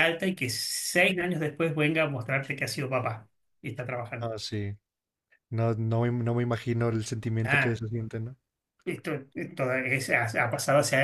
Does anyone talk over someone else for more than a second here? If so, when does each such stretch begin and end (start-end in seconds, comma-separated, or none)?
none